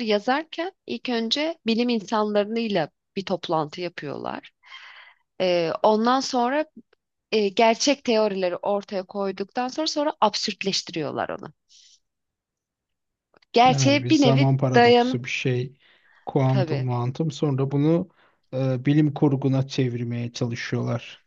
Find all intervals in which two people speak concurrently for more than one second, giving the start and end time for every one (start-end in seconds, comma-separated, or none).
13.7-15.2